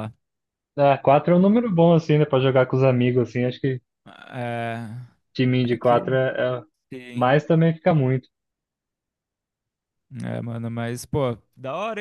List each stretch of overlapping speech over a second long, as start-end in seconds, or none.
none